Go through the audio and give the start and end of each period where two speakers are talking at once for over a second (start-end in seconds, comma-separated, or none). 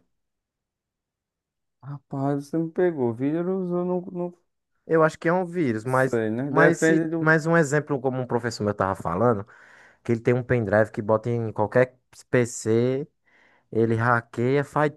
5.8-7.4